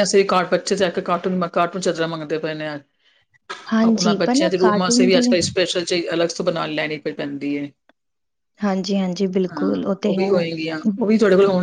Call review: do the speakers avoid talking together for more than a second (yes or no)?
no